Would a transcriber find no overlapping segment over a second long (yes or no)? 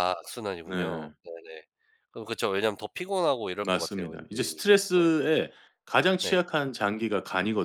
no